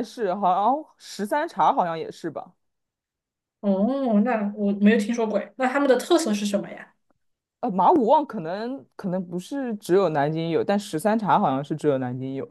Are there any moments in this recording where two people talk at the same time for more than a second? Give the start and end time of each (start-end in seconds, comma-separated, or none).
none